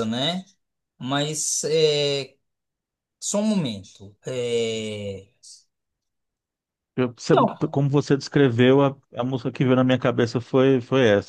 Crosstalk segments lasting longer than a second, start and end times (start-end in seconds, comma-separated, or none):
none